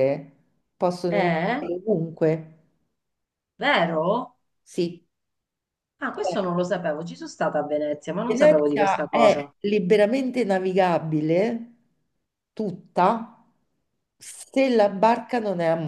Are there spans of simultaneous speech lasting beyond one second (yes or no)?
yes